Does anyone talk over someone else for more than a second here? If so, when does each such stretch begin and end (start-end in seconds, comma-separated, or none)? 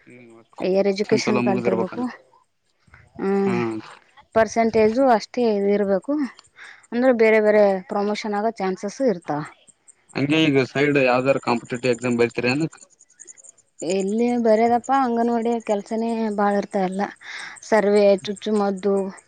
0.6-1.9